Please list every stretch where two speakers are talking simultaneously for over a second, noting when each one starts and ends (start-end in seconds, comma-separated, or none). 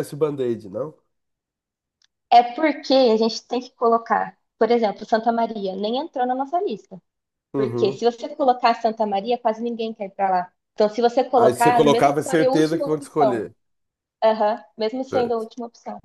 11.4-13.5